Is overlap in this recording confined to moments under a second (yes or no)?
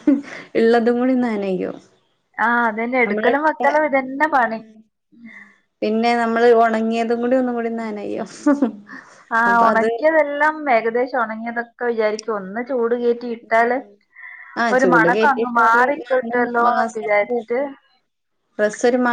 no